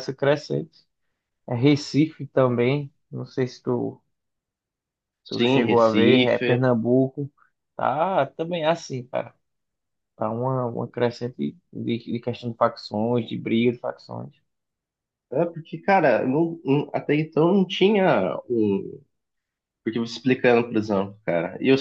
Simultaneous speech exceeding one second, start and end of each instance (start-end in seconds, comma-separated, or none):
5.3-6.7